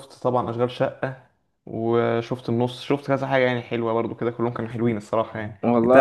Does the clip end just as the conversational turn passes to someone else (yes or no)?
no